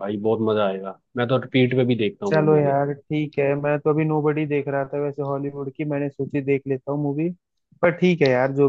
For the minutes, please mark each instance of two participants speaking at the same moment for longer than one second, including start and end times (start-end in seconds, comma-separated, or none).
none